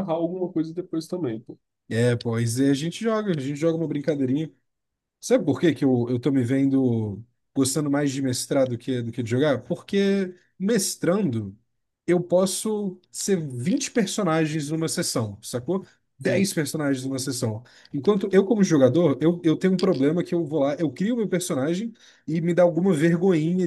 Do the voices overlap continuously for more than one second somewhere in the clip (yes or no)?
no